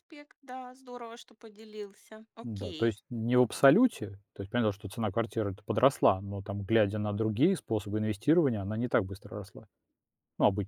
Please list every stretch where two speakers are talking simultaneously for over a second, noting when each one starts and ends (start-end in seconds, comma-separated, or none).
none